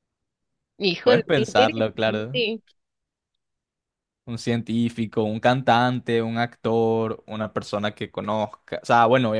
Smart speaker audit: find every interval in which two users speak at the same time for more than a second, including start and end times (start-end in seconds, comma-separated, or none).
1.0-2.4